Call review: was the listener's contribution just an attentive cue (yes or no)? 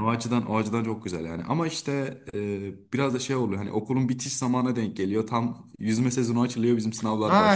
no